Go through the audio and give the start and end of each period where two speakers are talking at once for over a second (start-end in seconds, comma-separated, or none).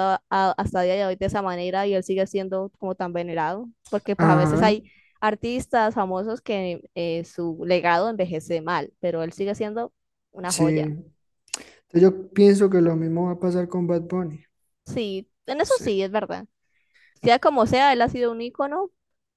none